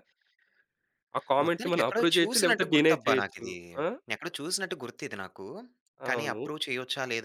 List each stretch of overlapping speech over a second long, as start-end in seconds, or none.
1.4-3.4